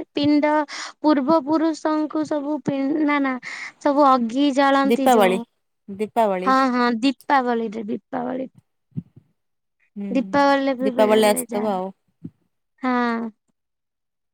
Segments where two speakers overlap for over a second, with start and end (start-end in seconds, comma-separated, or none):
10.2-11.7